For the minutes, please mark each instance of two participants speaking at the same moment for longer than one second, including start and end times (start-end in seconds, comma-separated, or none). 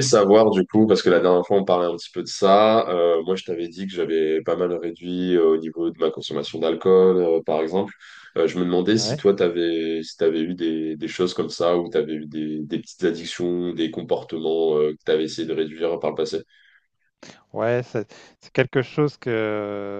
none